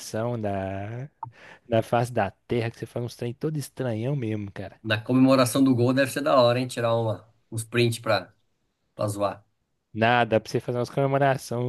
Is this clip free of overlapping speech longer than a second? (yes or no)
yes